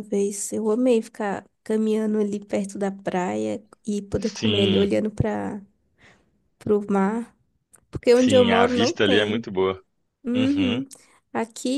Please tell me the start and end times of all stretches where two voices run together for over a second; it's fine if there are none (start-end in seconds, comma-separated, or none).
8.1-9.4